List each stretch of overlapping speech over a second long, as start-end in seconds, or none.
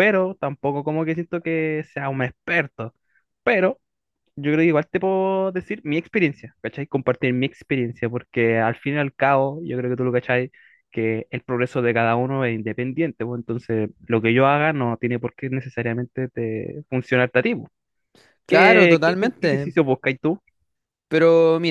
18.5-19.7